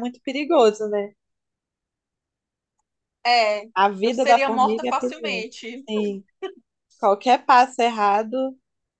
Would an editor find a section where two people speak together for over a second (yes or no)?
yes